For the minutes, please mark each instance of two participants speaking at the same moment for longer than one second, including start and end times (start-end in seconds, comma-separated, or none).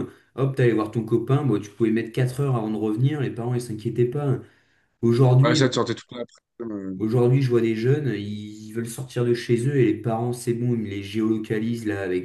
none